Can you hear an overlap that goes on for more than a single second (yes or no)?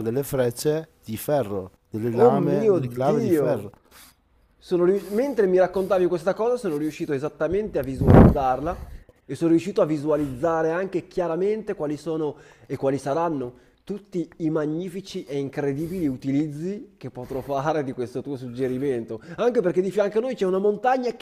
yes